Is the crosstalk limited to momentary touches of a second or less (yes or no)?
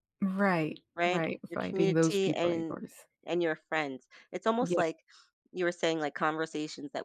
no